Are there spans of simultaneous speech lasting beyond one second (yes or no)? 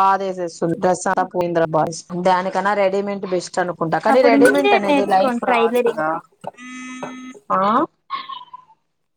yes